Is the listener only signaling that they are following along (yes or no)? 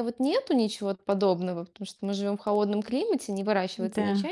yes